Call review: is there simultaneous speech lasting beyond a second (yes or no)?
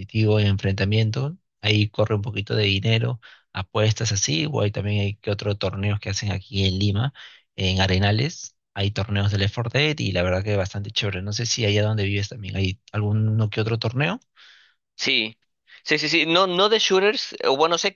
no